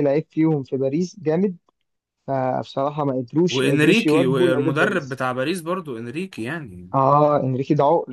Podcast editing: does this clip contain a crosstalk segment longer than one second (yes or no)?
yes